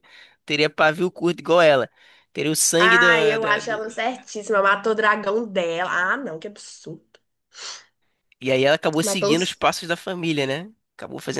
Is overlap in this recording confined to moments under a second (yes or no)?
no